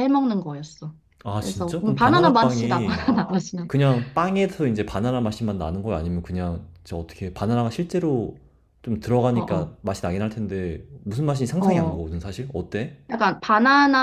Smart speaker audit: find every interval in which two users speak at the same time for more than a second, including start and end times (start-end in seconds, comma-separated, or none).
1.4-3.1